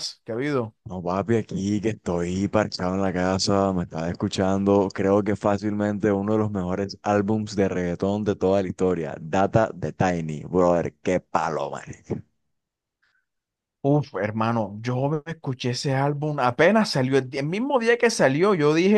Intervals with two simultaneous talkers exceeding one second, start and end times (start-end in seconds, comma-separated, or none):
none